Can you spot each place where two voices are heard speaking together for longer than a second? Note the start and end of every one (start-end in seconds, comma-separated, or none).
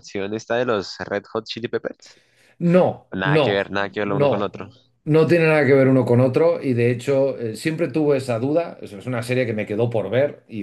3.1-4.7